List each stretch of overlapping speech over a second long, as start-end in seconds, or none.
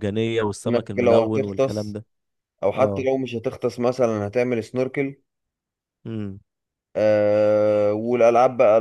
0.7-2.0